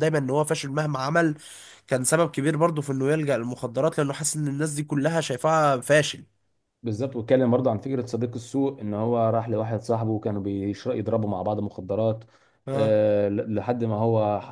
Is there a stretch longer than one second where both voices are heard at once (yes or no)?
no